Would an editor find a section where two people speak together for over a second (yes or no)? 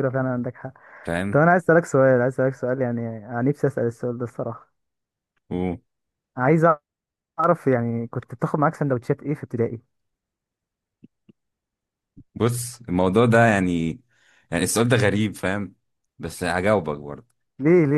no